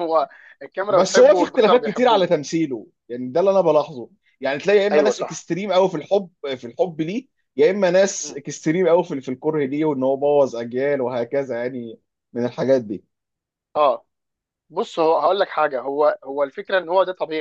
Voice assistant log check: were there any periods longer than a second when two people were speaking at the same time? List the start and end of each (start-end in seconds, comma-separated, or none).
0.9-2.3